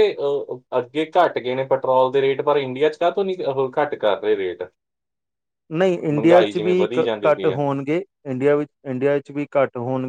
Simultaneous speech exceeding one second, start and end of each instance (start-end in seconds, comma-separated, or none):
6.1-7.6